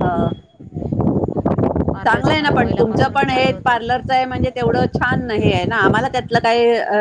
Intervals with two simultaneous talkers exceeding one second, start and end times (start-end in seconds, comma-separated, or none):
2.0-3.8